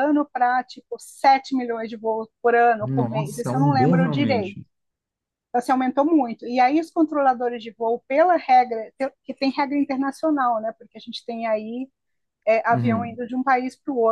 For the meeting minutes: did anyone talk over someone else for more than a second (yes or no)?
yes